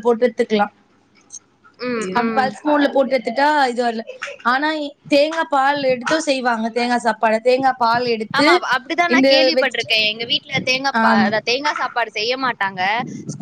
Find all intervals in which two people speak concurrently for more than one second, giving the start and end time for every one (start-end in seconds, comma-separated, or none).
none